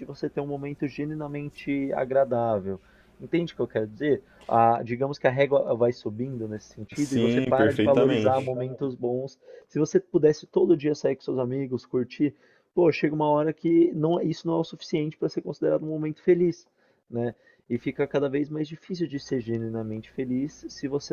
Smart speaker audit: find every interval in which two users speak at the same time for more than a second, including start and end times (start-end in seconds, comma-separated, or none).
6.9-8.5